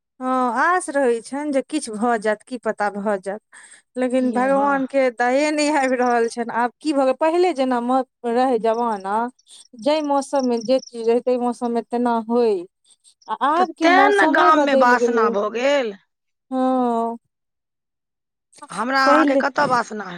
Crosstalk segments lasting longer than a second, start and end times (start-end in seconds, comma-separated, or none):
13.6-15.2